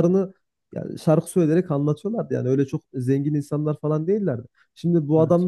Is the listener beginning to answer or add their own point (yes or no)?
no